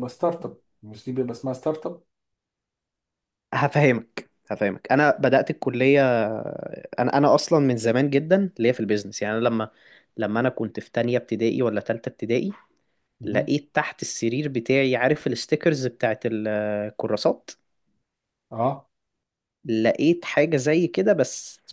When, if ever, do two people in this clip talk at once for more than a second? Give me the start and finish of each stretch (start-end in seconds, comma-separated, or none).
none